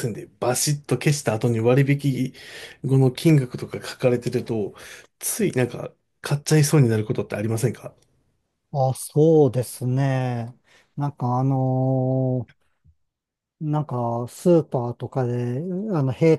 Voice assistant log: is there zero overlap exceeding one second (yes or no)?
yes